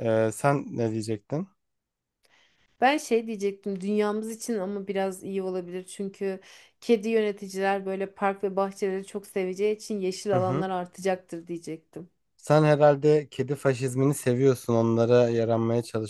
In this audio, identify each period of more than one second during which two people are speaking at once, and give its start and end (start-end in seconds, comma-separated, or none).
none